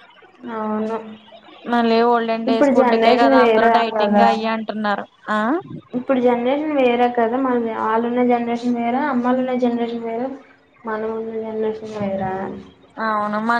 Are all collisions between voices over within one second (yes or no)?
no